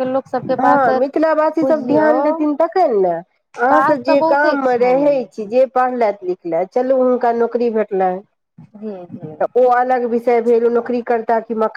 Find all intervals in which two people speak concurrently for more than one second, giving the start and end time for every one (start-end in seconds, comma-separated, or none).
3.7-5.3